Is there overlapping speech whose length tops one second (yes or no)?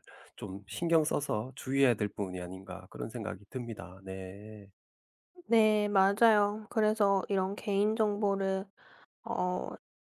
no